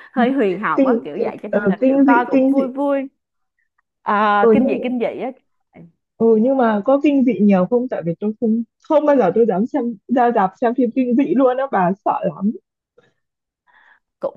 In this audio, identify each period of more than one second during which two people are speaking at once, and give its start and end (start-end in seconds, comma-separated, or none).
0.8-2.7